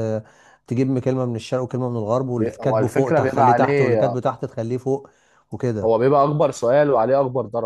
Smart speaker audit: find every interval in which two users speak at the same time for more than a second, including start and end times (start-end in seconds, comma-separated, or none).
2.4-4.2